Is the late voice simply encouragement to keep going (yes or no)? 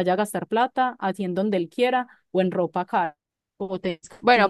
no